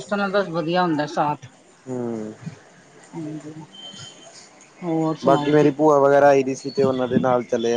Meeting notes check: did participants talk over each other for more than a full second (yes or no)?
no